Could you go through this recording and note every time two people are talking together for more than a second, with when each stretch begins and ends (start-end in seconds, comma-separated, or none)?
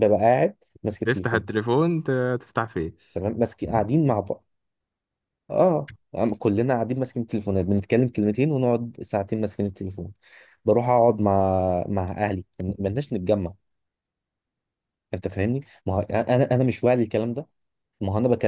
none